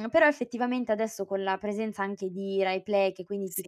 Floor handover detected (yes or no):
no